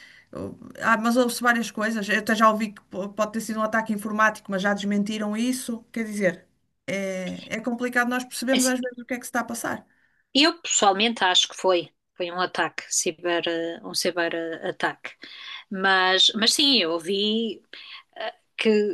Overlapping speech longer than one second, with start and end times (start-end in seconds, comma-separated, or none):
none